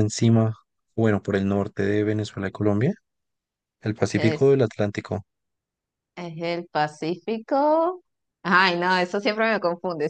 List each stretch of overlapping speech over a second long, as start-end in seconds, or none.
none